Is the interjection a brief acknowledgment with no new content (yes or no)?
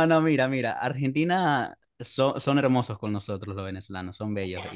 no